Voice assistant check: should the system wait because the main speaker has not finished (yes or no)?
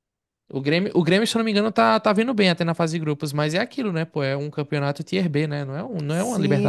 no